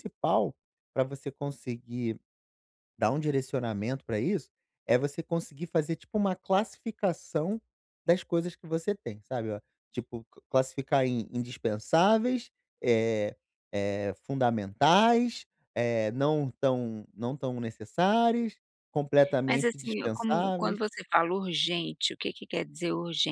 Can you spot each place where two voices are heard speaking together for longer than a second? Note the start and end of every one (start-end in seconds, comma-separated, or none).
19.5-20.8